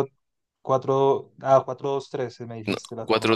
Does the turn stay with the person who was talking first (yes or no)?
no